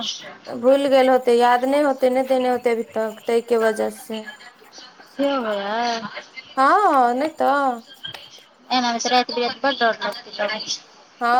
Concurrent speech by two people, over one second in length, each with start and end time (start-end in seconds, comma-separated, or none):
none